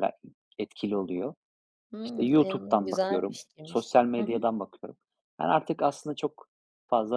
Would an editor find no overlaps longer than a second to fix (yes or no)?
no